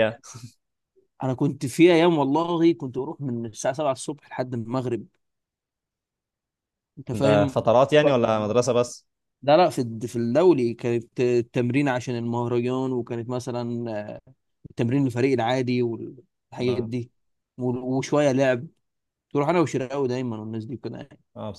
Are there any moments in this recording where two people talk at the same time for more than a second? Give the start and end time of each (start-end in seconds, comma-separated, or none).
7.1-8.6